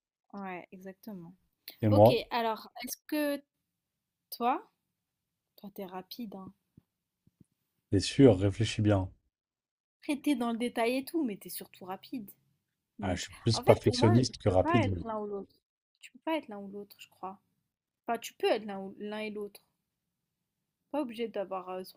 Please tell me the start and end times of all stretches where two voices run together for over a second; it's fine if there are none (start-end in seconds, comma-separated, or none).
13.0-15.1